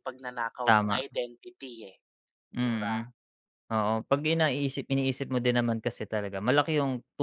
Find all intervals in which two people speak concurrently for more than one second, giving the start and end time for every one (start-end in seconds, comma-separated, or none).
none